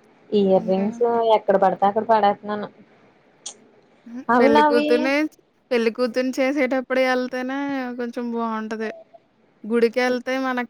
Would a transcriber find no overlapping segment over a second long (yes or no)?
yes